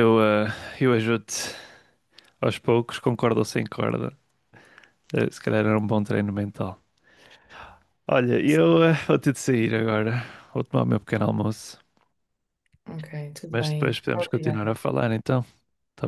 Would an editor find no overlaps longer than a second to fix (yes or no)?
no